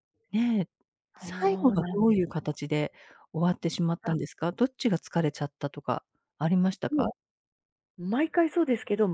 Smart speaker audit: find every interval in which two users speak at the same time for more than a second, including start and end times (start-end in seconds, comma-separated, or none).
1.2-2.5